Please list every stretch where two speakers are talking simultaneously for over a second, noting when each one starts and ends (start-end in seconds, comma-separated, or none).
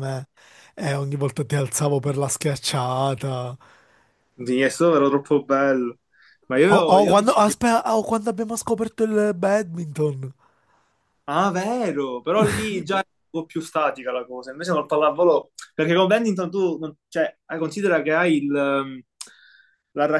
none